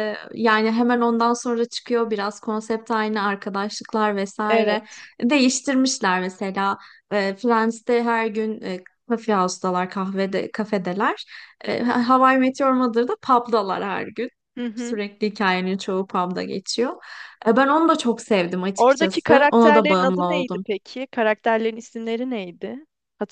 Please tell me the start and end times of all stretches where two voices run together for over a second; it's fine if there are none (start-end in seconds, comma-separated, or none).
18.8-20.7